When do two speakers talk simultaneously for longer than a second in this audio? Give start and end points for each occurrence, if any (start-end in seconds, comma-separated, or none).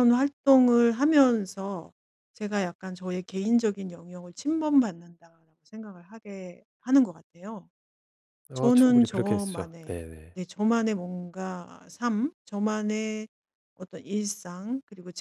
8.5-10.4